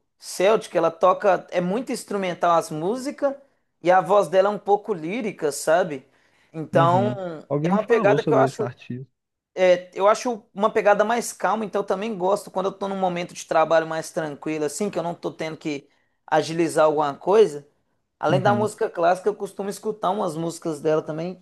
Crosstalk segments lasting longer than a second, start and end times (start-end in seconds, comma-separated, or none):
6.7-8.7